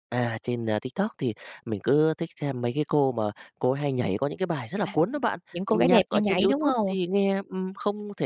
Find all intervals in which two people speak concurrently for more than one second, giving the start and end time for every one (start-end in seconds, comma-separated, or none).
4.8-7.0